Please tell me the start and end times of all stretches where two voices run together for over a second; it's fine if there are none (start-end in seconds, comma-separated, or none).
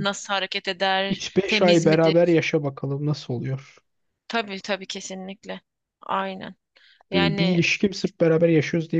1.1-2.4